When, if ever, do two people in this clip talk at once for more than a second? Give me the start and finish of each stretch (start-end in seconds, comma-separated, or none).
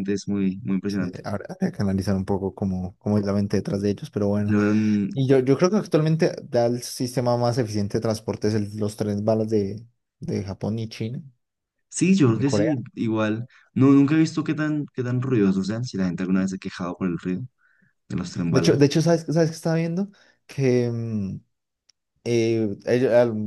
none